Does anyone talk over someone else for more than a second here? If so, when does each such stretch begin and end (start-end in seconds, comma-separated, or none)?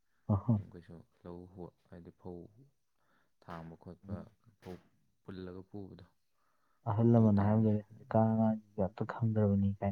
7.1-8.4